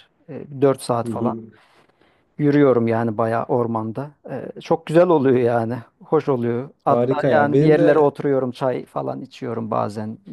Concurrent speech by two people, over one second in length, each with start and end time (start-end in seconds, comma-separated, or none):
6.9-8.1